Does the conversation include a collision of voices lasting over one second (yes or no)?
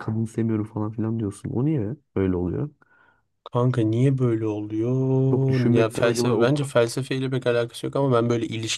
yes